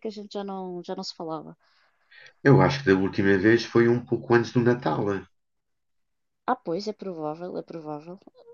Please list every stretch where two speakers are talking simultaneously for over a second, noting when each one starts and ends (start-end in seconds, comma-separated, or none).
none